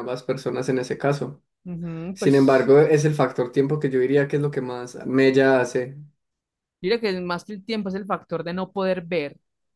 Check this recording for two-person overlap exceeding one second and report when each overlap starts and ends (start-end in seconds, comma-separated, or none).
none